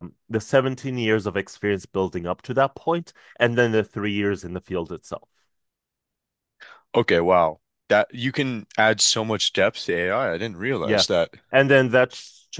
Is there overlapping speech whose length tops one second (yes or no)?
no